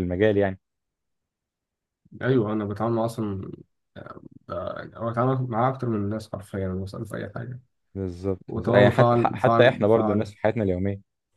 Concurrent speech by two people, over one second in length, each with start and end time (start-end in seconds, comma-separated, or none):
8.5-10.3